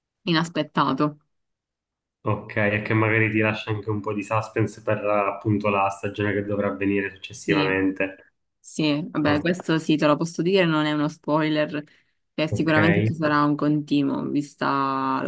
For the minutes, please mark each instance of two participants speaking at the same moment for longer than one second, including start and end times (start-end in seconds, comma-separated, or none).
none